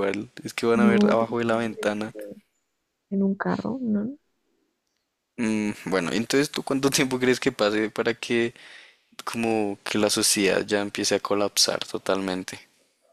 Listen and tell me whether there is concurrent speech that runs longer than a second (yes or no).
yes